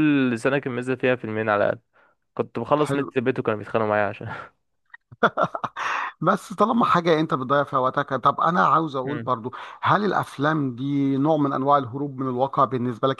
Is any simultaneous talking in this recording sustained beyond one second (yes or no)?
no